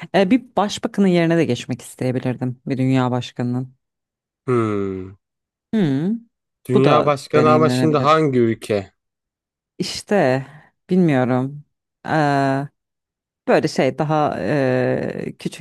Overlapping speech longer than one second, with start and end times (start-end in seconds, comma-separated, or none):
6.7-8.2